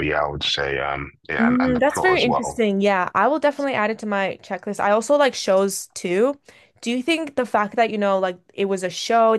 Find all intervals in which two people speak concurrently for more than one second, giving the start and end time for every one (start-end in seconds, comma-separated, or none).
1.4-2.6